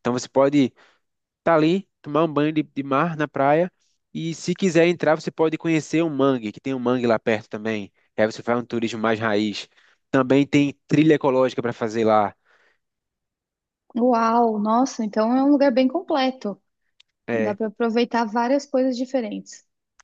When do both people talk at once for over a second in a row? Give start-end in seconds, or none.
none